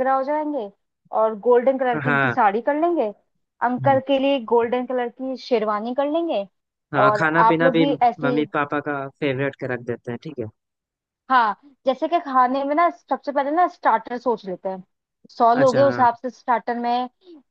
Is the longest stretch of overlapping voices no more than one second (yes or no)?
no